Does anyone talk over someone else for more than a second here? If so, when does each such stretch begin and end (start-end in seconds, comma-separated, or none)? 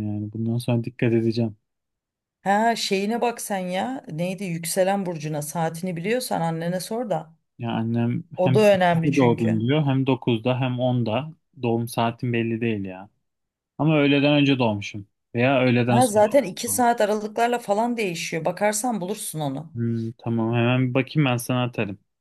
8.4-9.6